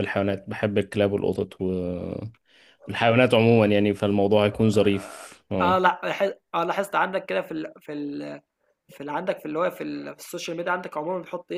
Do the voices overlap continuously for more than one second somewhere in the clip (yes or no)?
no